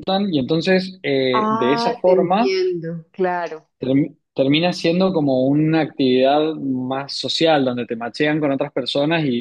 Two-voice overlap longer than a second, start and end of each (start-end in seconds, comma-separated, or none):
1.3-2.6